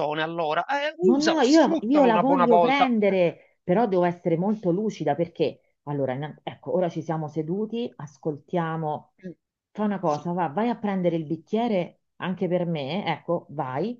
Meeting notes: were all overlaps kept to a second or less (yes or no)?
no